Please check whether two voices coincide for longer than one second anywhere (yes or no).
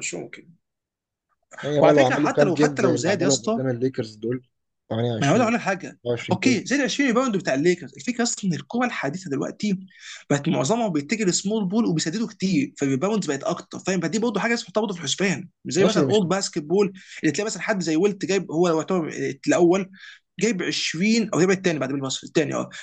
yes